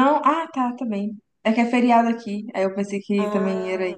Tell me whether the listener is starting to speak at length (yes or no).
yes